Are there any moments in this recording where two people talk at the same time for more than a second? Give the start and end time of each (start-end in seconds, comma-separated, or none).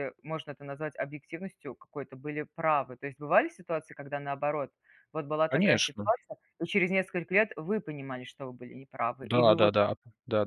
none